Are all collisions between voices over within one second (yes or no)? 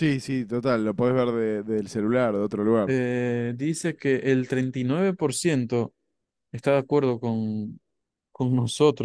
yes